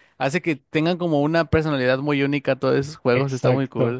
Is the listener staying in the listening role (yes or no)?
no